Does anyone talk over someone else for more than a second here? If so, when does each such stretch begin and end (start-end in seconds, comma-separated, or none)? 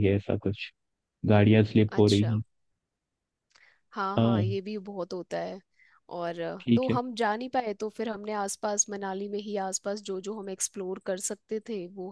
none